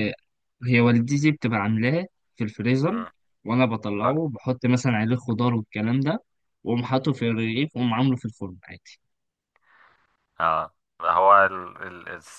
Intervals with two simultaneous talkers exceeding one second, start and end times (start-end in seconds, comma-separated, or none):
none